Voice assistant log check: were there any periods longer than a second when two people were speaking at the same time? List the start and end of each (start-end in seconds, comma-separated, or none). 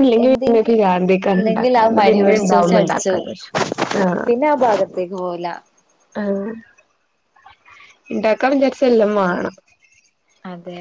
1.4-3.3